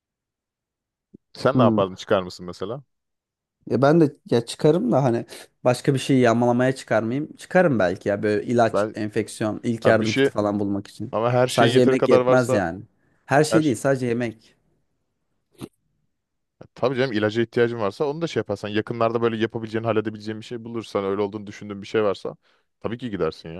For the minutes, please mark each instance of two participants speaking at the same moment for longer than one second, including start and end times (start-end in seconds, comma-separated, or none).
11.1-12.6